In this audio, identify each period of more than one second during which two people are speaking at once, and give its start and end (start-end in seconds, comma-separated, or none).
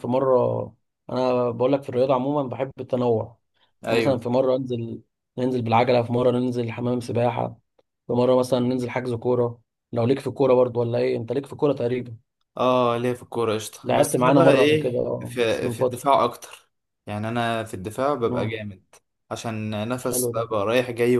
13.8-16.1